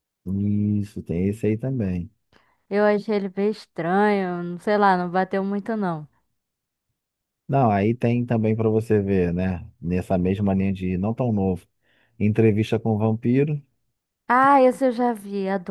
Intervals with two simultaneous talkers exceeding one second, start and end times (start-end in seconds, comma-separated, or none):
none